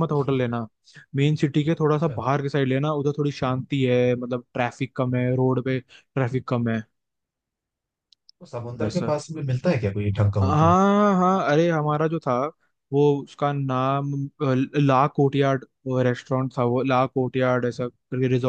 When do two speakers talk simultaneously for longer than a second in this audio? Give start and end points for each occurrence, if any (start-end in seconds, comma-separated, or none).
none